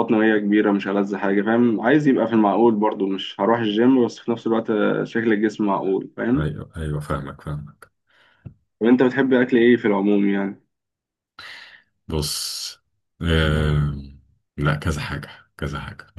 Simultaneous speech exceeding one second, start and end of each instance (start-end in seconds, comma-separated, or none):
none